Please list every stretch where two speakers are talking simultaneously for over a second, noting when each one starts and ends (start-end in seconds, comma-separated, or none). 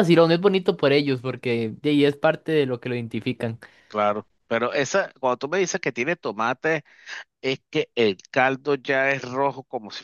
none